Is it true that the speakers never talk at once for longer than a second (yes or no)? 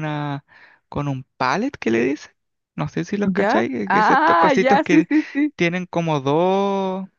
no